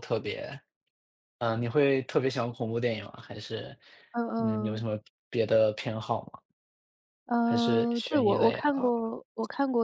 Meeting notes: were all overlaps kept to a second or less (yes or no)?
no